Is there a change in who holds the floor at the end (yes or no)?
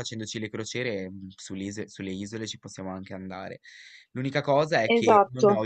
no